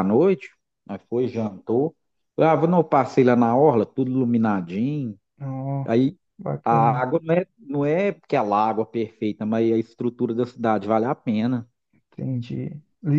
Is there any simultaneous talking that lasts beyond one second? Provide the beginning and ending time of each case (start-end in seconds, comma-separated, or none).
none